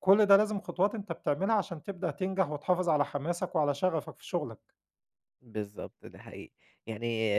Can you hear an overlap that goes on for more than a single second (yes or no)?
no